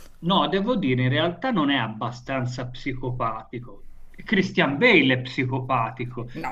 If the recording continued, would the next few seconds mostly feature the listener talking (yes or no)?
yes